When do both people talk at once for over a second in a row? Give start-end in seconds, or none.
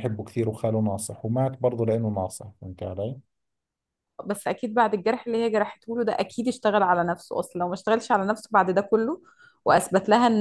none